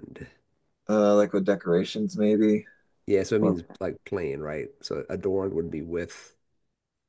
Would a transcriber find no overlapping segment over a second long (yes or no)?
yes